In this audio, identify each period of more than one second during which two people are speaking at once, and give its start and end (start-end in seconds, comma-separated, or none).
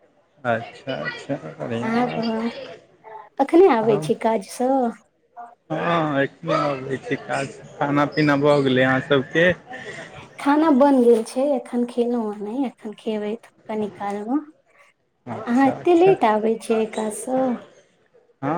none